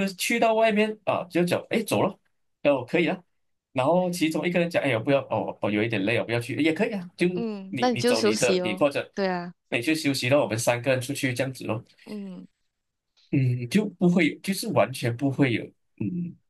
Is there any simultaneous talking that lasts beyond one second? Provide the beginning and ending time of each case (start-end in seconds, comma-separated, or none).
7.7-9.1